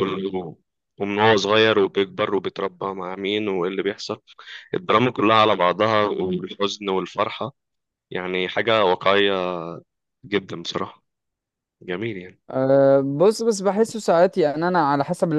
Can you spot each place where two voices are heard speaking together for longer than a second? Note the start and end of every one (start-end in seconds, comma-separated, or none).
none